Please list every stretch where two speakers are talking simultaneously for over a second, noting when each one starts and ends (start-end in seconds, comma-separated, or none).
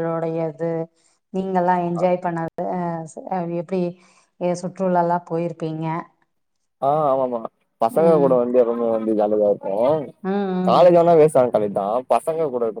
none